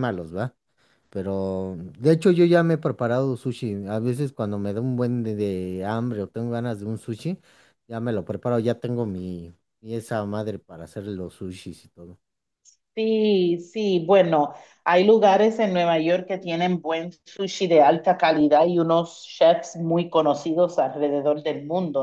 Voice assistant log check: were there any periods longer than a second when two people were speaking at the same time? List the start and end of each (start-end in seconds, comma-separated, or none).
none